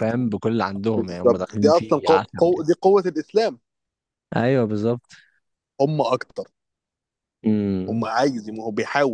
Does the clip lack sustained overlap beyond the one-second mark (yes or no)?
no